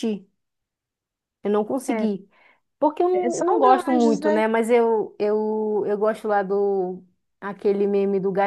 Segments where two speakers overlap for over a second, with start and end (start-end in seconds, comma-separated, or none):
3.1-4.4